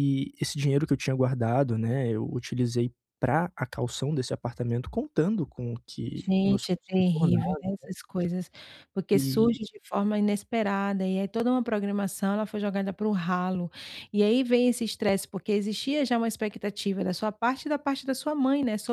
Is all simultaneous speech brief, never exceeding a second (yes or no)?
no